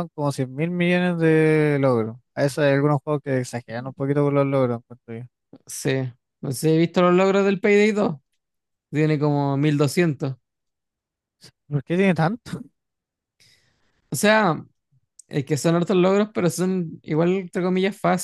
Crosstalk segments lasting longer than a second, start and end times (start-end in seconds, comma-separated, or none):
none